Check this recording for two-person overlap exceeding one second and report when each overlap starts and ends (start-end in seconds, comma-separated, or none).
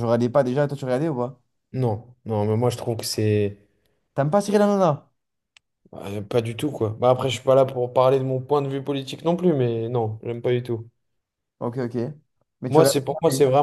none